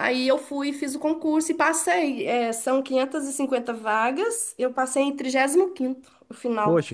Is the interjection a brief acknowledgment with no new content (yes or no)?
no